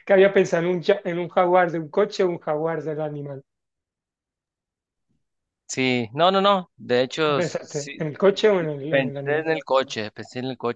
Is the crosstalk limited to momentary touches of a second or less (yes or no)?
no